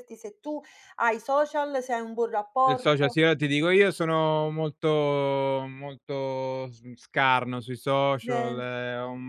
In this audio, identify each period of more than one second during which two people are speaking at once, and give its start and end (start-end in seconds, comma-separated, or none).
none